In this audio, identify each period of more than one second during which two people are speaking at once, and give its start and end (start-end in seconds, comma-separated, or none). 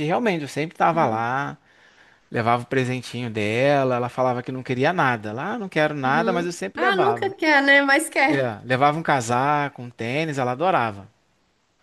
6.0-7.3